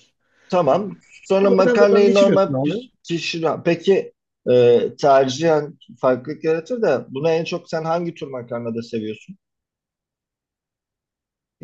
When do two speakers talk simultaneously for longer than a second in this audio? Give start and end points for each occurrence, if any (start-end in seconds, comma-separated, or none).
1.4-2.8